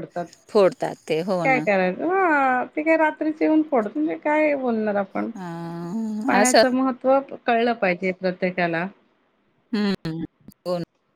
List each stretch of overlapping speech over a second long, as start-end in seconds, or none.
none